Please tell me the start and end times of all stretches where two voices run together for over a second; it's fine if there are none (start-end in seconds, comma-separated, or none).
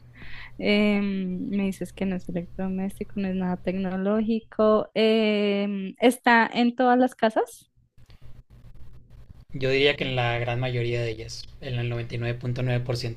none